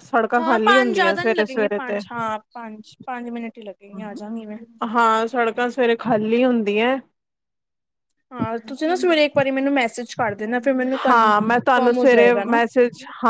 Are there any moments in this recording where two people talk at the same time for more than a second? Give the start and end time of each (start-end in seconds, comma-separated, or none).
11.1-12.3